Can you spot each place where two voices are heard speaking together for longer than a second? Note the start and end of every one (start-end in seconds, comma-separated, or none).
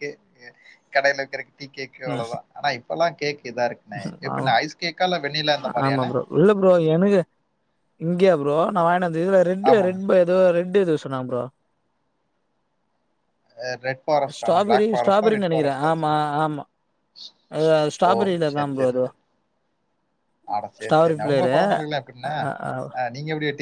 14.4-15.9